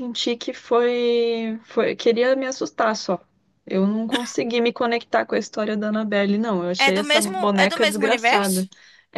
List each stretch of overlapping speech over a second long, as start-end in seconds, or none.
6.8-8.7